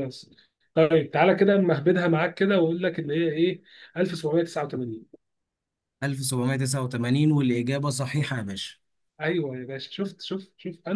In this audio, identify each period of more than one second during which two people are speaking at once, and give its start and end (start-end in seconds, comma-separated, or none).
none